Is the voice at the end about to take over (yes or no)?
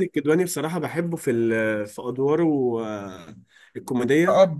no